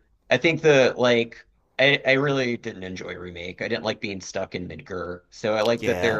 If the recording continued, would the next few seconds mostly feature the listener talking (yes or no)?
no